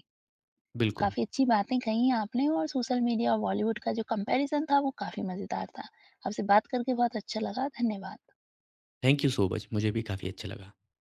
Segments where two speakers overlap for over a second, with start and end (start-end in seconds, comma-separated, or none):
none